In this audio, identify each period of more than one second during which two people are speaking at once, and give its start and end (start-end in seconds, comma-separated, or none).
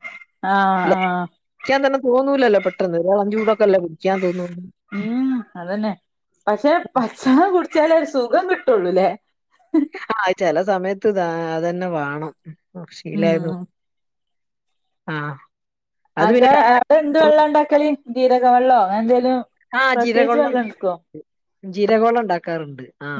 none